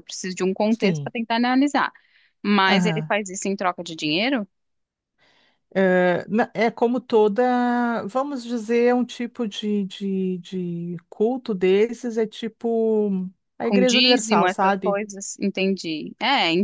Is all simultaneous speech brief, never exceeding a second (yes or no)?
no